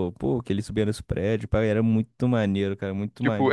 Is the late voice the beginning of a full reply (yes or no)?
yes